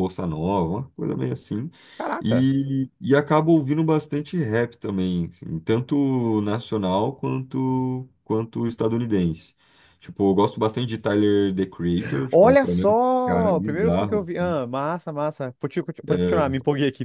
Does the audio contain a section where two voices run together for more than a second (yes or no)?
yes